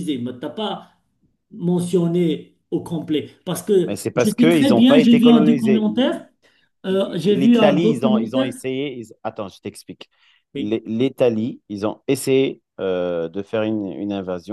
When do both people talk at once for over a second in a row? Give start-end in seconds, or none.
3.8-6.3, 6.9-8.5